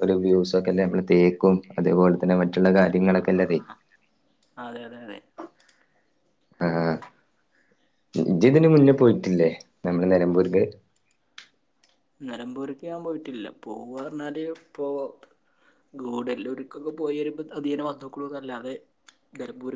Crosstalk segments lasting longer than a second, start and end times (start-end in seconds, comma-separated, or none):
none